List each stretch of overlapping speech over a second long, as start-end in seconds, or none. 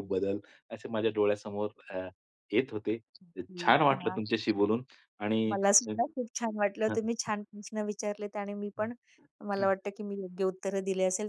none